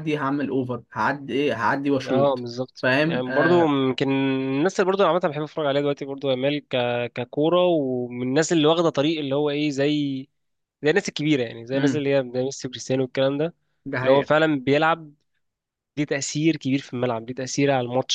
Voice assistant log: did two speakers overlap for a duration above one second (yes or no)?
yes